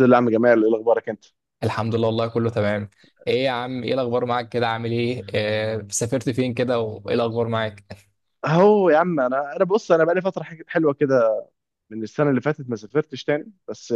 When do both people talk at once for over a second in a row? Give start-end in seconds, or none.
none